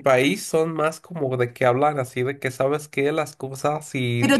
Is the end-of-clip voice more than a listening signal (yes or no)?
yes